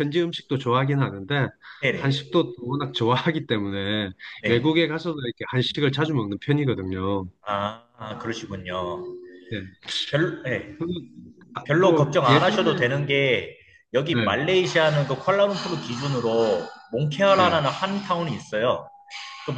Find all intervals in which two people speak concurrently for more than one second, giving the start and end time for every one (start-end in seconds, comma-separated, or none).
11.7-12.9